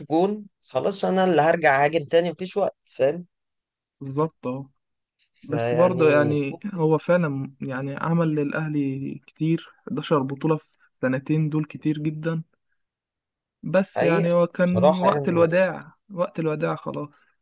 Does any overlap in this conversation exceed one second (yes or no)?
yes